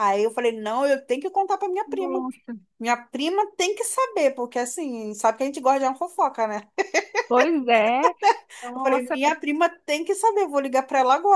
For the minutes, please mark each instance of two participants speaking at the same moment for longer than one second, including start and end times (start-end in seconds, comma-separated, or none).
none